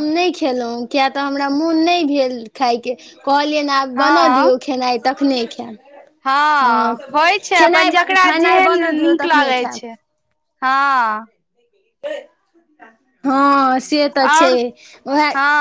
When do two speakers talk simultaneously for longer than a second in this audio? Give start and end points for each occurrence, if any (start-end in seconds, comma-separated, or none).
7.6-9.8